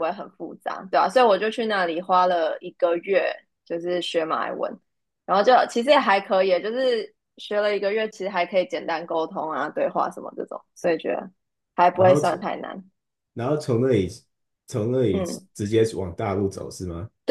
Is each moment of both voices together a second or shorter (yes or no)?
yes